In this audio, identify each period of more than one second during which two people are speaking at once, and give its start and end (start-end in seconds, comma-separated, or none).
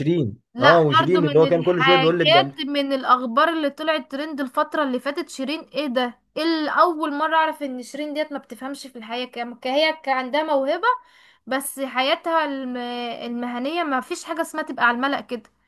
0.5-2.5